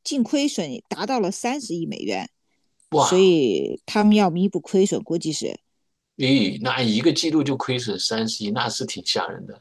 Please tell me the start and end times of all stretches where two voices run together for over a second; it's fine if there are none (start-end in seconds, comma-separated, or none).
none